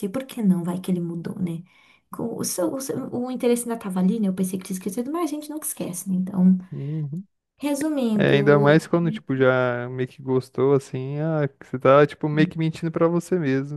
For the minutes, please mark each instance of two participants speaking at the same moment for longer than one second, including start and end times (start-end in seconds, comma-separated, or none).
none